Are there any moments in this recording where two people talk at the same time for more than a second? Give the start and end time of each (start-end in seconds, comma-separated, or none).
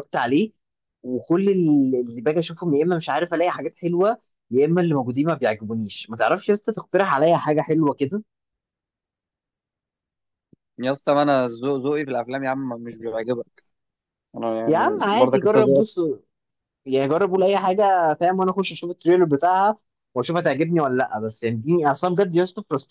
14.7-15.9